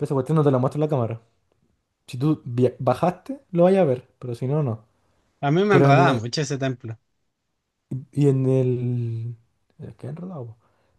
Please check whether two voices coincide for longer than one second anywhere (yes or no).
no